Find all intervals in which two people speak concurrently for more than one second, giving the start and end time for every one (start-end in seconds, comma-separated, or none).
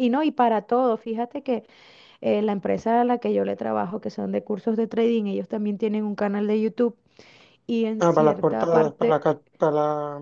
8.0-9.2